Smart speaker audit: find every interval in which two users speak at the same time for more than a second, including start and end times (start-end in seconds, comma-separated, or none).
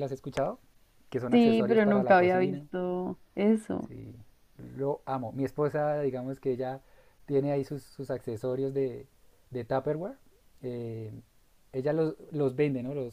1.3-2.6